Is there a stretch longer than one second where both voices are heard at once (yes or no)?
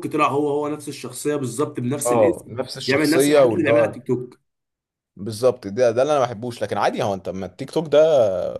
yes